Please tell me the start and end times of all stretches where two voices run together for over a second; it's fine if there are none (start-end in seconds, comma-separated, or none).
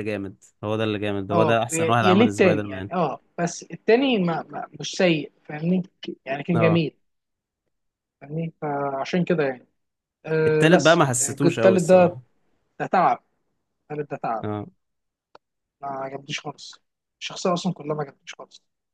1.3-2.9, 10.5-12.2